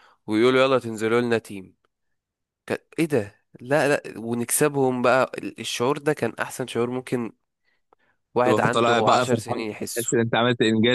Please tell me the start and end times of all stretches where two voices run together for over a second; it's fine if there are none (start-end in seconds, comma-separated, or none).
8.4-10.1